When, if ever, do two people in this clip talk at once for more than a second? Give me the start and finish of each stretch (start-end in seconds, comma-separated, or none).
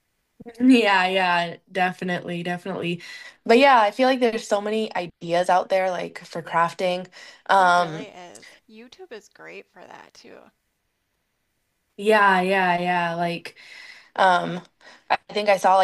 none